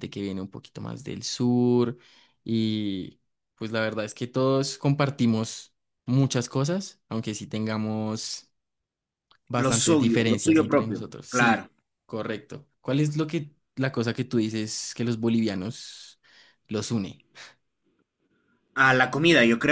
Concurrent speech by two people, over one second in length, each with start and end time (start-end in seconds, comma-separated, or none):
9.5-11.7